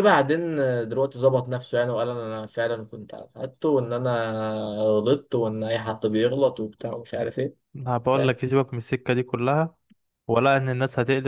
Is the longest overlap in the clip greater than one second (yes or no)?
no